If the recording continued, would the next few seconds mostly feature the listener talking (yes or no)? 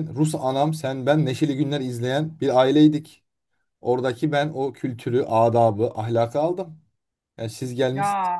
no